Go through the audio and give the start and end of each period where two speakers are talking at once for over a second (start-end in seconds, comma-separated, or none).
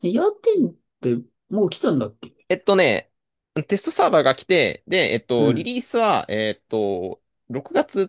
none